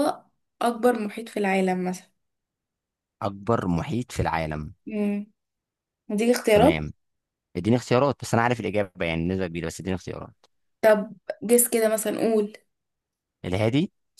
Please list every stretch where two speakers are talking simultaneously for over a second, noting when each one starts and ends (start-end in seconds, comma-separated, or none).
none